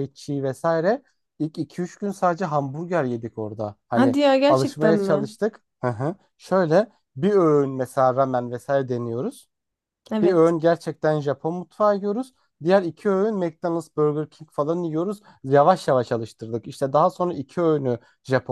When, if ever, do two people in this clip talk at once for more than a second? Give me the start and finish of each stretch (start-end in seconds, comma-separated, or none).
3.9-5.3